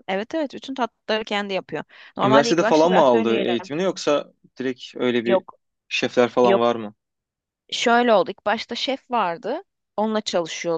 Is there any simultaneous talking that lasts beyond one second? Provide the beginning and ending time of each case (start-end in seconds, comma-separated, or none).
2.2-3.6